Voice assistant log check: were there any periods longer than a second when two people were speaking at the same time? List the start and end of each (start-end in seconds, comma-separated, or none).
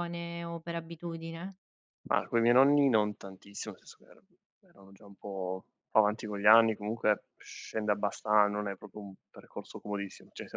none